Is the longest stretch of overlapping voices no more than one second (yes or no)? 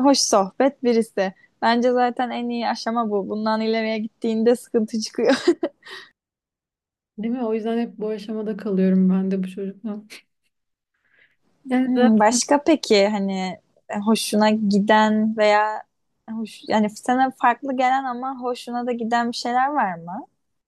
yes